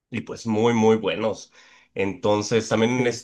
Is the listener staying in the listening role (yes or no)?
yes